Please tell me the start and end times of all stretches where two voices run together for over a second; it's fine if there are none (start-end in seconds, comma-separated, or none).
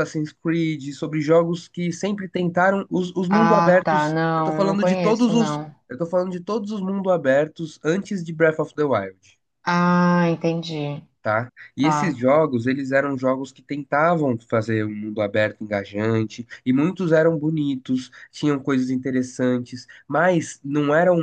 3.3-5.8